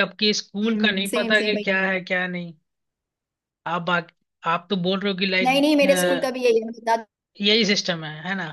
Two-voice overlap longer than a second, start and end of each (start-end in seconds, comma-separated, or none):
none